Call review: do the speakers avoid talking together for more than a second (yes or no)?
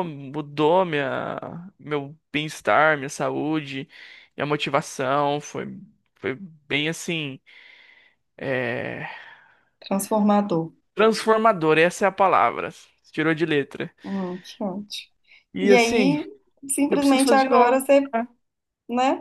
no